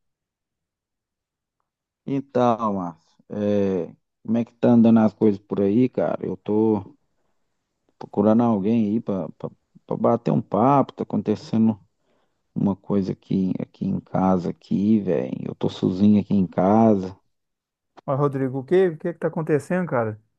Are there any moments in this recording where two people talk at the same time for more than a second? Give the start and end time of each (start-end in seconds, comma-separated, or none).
none